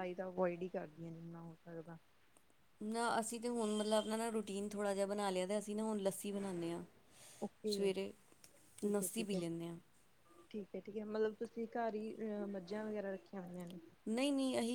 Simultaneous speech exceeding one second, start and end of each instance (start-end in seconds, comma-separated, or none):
none